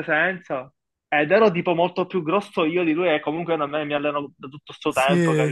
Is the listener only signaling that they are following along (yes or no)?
no